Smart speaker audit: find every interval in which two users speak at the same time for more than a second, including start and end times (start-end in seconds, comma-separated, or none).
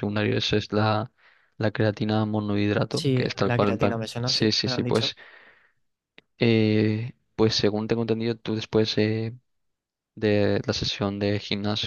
2.9-5.1